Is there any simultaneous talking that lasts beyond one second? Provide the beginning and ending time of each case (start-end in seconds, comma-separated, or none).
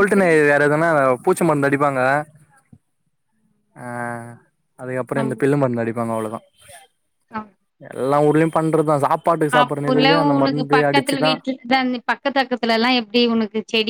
9.6-11.3